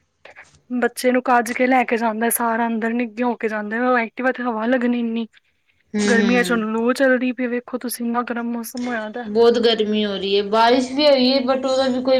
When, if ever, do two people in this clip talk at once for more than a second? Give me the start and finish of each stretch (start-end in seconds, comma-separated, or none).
none